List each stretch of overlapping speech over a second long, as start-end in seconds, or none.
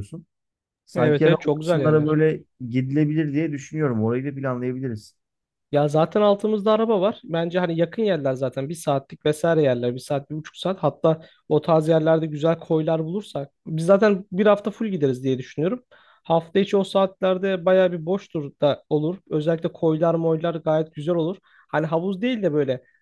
0.9-2.2